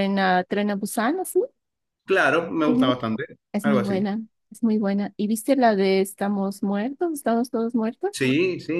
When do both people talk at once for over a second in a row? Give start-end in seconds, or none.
none